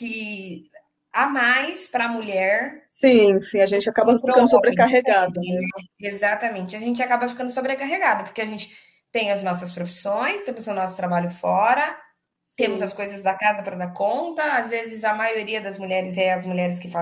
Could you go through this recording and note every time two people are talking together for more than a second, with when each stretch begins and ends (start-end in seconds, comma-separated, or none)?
3.6-5.6